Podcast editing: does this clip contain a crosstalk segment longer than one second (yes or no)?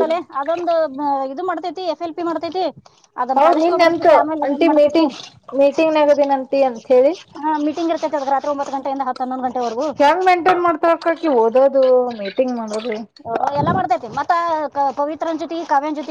yes